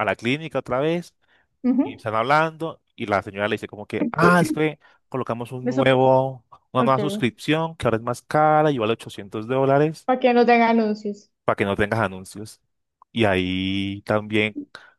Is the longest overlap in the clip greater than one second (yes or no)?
no